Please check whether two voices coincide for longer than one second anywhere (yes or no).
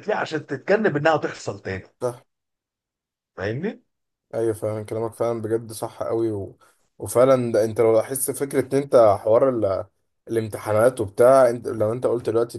no